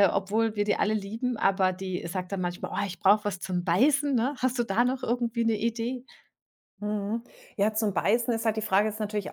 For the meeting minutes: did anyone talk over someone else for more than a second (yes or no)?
no